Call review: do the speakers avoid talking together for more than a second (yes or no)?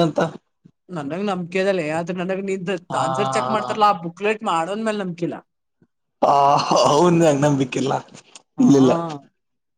yes